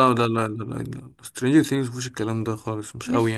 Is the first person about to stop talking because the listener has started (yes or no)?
yes